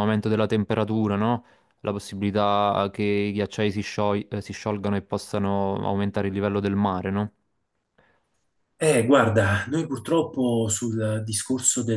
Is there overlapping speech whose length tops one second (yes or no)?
no